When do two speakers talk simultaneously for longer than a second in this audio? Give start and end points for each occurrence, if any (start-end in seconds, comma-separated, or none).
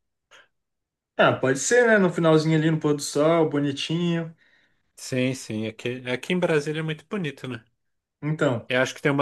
none